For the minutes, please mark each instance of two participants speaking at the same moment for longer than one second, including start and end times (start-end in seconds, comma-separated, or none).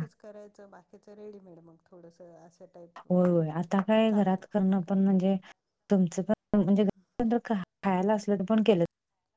none